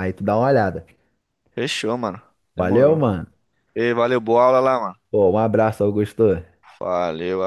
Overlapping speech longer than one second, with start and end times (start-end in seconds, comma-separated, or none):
none